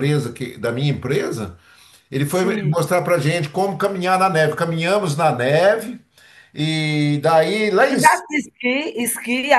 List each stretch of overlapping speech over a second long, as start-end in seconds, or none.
none